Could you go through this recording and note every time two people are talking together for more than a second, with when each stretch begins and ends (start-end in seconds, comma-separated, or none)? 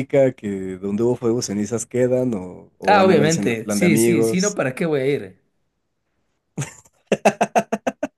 2.9-4.6